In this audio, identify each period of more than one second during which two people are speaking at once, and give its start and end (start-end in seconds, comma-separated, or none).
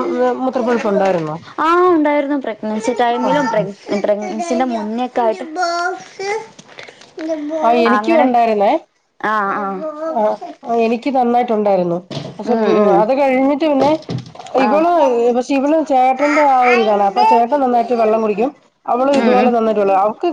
16.9-18.2